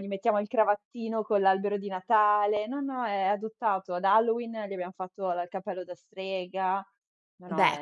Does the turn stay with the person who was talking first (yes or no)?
no